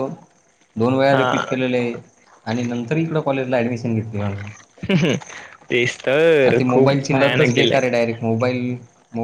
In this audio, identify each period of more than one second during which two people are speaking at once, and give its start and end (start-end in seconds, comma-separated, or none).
6.4-8.0